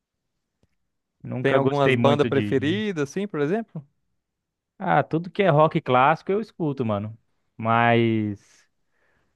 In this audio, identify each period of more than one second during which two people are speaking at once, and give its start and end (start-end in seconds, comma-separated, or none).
1.4-2.8